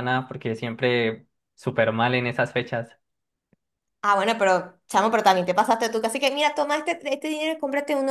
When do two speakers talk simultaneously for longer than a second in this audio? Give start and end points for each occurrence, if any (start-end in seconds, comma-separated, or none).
none